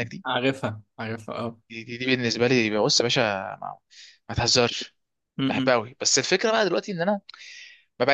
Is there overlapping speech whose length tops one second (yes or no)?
no